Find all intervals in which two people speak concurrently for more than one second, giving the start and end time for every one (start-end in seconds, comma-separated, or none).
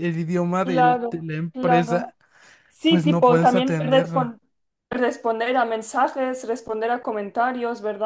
0.6-2.1, 2.8-4.3